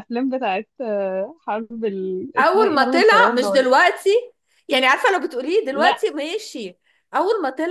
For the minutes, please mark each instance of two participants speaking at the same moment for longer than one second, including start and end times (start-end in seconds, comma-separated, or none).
2.4-3.7